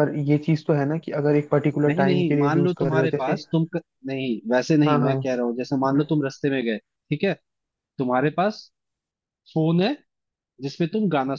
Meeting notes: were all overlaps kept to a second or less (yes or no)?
no